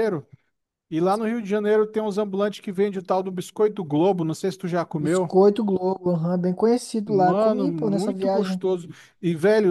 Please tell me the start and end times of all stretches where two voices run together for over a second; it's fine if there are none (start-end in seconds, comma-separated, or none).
7.1-8.6